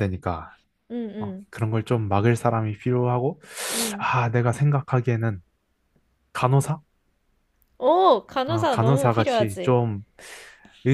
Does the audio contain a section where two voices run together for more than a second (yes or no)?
yes